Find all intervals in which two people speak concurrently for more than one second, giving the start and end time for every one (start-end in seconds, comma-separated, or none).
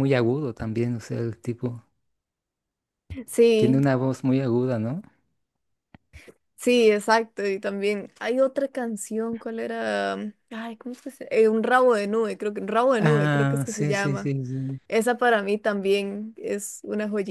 13.0-14.3